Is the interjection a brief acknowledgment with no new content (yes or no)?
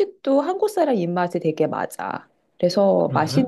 yes